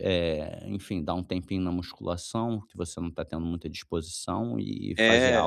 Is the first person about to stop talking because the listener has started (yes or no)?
yes